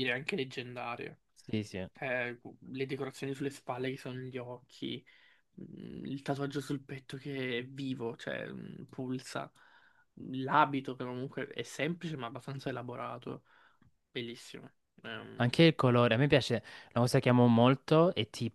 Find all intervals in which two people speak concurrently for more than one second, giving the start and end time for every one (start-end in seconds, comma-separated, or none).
none